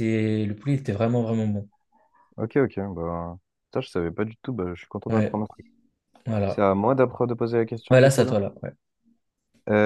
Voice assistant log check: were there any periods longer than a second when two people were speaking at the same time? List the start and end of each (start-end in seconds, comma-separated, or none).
none